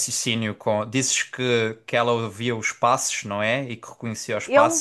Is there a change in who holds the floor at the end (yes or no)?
yes